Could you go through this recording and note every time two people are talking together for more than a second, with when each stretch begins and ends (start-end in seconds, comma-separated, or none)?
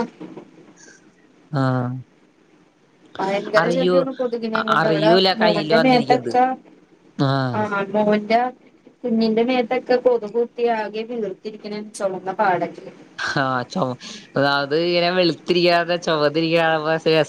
4.8-6.3